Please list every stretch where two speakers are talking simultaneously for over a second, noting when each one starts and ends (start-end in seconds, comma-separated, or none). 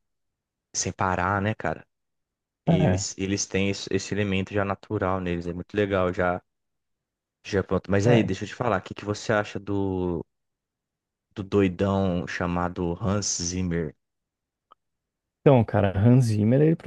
none